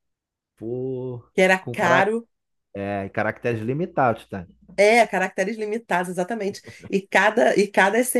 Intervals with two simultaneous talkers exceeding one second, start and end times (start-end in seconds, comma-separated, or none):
none